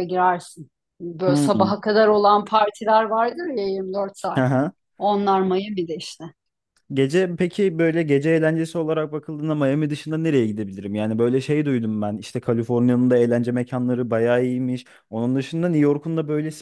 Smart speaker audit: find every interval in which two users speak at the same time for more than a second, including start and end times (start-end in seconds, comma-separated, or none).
none